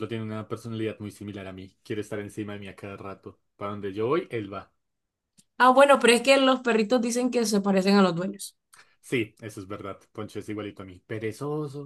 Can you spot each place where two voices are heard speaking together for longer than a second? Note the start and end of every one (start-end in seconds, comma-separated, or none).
none